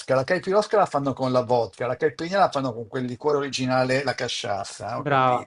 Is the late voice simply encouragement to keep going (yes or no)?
no